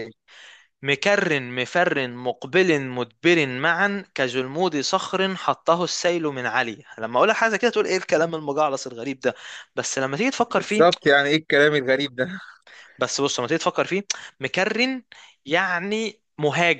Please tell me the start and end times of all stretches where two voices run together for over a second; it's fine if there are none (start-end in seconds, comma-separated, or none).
none